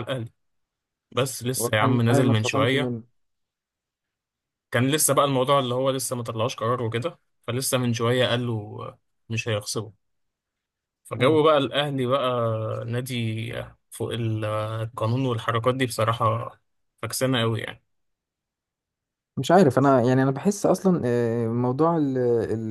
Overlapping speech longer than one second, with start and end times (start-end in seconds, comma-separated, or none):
1.6-2.9